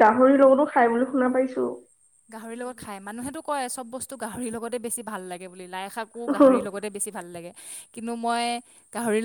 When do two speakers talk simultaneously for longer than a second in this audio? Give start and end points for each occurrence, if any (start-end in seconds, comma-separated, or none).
none